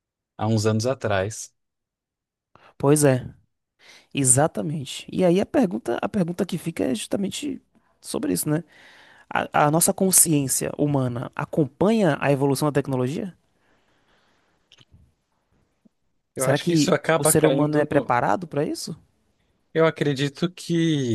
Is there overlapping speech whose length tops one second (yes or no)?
yes